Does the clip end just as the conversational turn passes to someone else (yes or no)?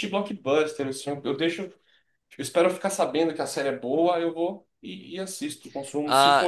no